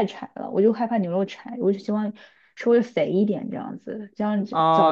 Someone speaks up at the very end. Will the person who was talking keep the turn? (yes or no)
no